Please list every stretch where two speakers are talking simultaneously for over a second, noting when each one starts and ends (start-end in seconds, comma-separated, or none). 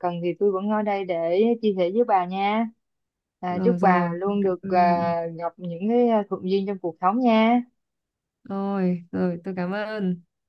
3.5-5.0